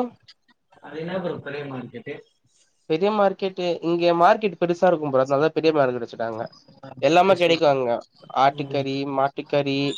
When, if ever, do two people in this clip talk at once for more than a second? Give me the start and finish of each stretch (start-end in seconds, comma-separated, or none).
none